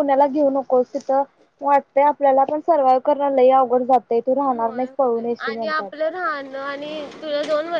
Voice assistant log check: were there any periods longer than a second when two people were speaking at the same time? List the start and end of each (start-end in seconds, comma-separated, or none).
4.5-5.9